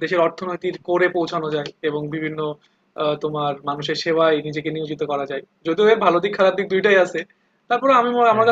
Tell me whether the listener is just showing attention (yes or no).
yes